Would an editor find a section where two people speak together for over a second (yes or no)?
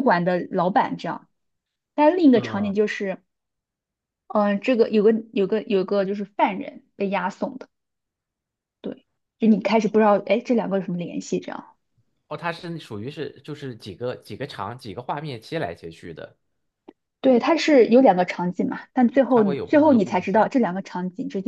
yes